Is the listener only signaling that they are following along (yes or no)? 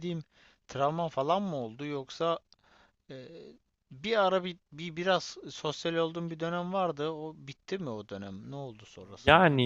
no